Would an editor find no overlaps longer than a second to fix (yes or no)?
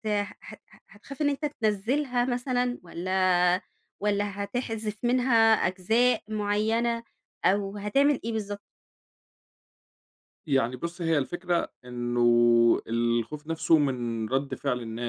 yes